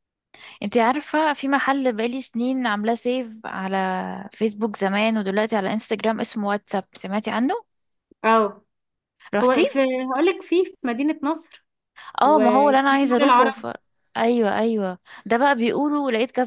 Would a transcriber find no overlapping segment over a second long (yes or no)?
no